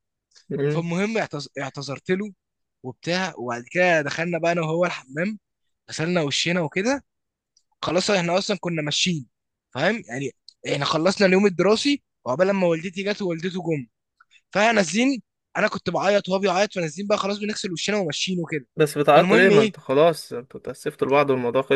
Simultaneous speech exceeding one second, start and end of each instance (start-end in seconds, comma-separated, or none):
none